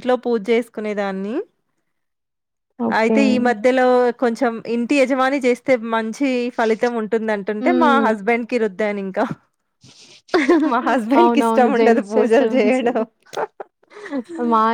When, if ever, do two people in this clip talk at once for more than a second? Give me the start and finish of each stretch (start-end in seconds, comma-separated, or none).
11.2-13.0